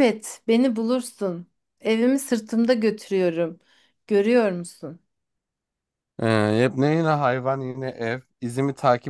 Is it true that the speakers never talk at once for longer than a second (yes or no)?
yes